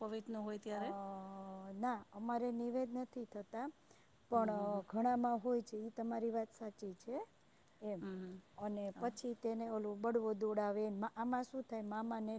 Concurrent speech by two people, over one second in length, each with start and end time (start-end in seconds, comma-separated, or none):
none